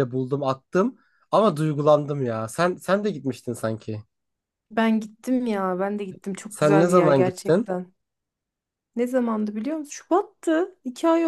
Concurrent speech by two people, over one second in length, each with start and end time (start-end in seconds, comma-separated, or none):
6.5-7.7